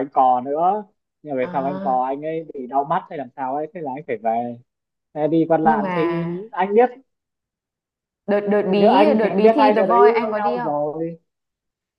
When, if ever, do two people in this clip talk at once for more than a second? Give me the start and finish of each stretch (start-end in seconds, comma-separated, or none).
8.7-10.7